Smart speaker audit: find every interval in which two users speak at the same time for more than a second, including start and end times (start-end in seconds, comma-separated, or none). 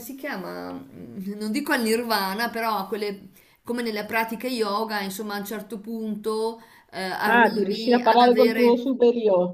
7.2-8.8